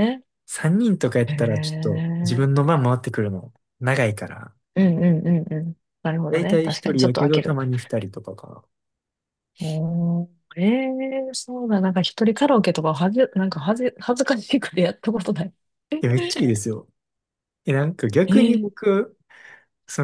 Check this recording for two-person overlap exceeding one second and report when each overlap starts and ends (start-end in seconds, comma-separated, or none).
1.3-2.7, 6.3-7.6